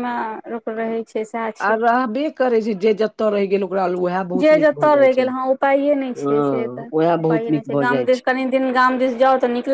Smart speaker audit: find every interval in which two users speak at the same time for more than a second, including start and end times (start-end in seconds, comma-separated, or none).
6.2-8.3